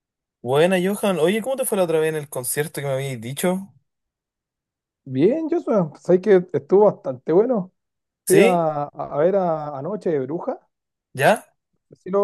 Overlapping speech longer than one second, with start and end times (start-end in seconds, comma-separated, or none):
none